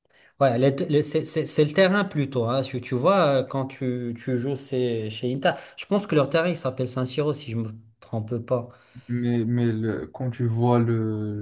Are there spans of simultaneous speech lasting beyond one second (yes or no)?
no